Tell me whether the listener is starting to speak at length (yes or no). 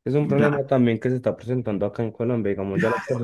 yes